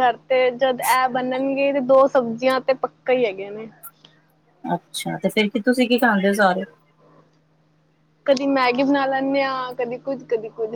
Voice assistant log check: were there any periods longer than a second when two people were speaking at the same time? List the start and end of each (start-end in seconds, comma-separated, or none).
none